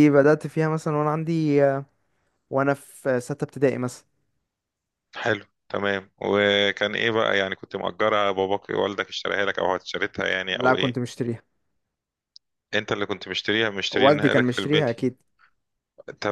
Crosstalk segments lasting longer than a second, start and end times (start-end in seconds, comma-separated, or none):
13.9-15.1